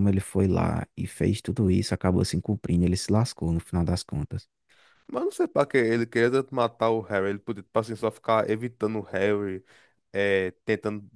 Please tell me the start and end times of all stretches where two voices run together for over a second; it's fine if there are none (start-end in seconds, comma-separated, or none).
none